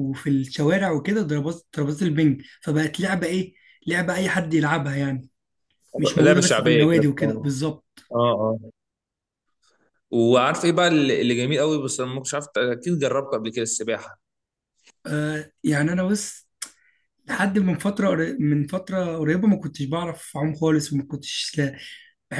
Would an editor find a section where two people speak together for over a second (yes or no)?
yes